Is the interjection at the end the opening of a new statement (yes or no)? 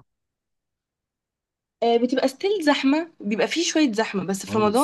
no